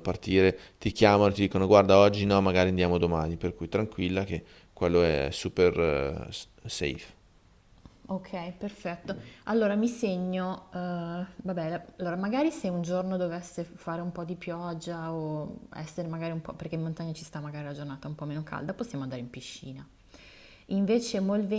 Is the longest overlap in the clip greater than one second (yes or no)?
no